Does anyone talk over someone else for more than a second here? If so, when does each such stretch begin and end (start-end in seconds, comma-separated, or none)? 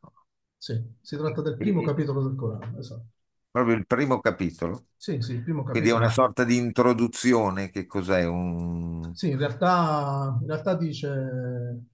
none